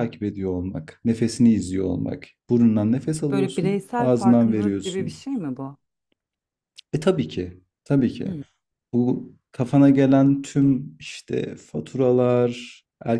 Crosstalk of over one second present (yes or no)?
yes